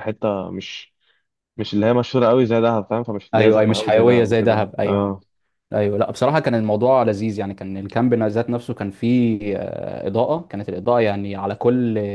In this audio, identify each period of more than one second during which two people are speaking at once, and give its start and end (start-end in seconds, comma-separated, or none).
3.3-5.1